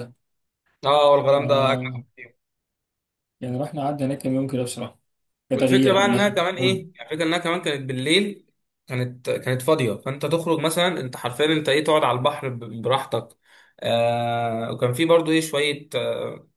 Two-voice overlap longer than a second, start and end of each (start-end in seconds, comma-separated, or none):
5.5-6.8